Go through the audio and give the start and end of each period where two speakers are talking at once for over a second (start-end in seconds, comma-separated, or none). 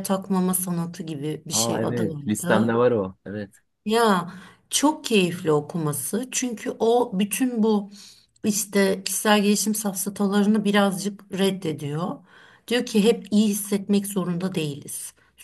1.5-2.8